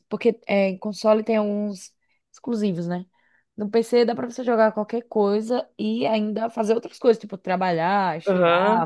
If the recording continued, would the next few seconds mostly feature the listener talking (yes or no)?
yes